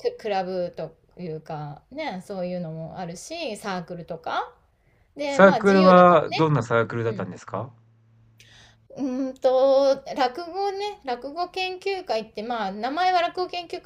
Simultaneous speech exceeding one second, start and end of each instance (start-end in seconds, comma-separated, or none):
5.2-6.5